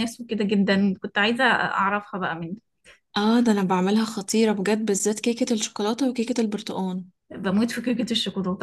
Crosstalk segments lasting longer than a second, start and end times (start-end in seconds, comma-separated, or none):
none